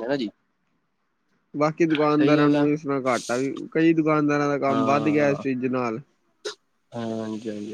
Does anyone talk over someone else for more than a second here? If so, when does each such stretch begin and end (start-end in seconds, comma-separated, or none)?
none